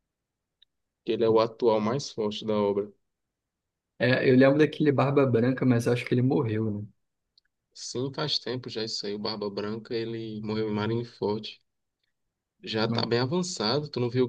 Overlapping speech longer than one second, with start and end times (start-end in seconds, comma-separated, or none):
none